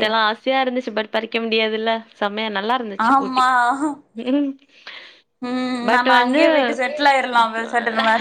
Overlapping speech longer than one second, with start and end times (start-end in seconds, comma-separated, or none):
none